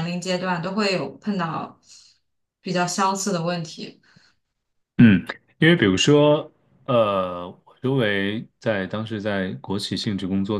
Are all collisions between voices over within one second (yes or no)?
yes